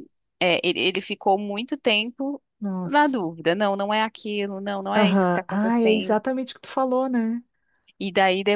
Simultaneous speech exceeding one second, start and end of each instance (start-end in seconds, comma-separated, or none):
5.0-6.2